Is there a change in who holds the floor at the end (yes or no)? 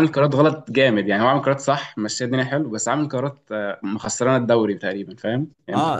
yes